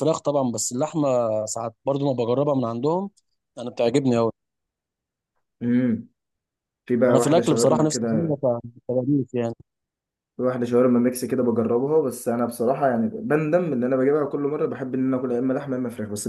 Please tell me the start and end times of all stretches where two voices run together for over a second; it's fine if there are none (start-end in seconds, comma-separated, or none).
7.1-8.4